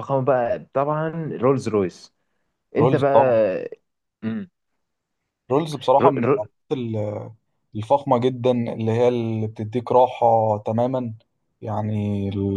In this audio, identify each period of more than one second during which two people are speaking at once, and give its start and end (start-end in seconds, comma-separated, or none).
none